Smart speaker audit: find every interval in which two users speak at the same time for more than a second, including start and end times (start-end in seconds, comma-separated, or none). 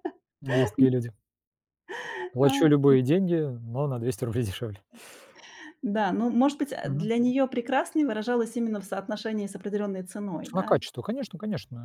none